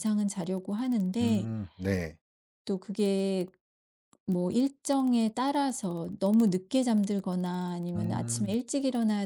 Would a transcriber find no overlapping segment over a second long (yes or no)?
yes